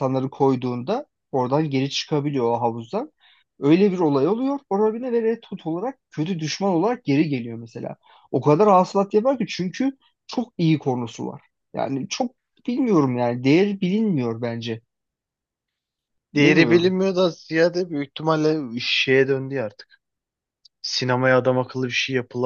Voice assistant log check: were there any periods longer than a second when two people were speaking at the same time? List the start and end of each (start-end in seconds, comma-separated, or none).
none